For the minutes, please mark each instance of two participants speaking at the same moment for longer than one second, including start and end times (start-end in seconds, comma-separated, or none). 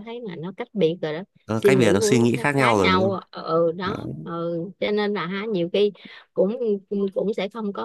1.4-3.2